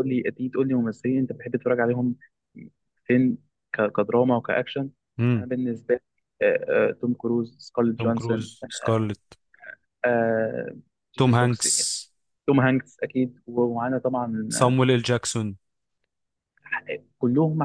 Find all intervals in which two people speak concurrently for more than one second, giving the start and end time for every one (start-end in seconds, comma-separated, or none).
none